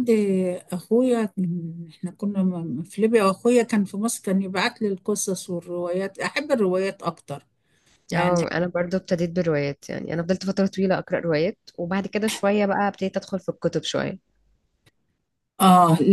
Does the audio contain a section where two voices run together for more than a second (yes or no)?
no